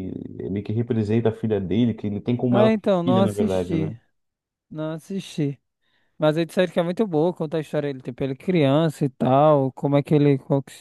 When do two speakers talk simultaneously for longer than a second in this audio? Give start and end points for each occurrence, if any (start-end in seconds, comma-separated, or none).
2.5-4.0